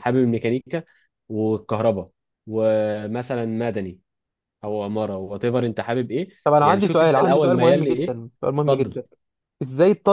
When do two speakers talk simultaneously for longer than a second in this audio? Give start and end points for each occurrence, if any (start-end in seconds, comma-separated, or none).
6.4-9.0